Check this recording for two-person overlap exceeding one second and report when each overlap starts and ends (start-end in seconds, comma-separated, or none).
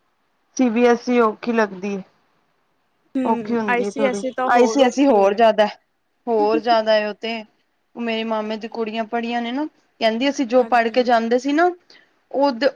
3.3-5.4